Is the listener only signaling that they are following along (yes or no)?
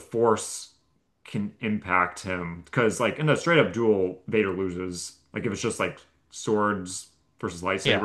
no